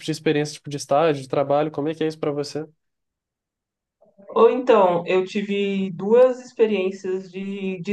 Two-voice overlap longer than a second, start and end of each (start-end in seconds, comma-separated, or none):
none